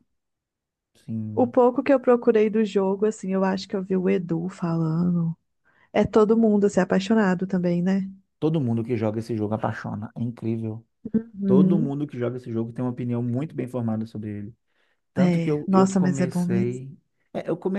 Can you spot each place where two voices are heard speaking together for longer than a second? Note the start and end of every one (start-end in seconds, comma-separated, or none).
15.2-16.8